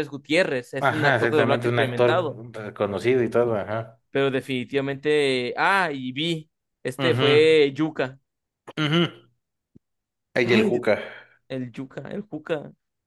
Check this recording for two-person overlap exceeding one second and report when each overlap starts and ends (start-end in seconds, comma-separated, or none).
0.8-2.4